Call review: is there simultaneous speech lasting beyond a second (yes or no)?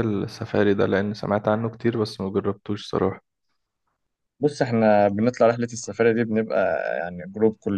no